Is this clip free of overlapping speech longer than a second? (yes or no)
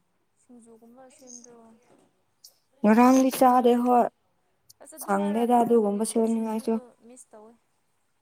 no